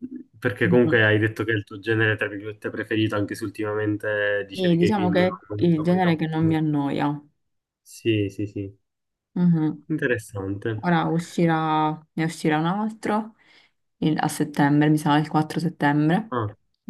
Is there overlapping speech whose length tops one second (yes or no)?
yes